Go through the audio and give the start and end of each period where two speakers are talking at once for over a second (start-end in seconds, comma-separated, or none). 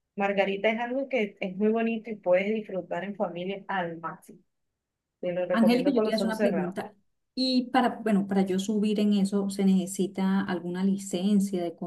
5.5-6.8